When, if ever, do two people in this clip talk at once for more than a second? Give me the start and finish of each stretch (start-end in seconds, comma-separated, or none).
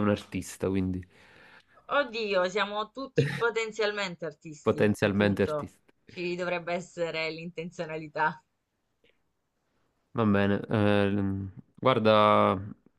4.6-5.9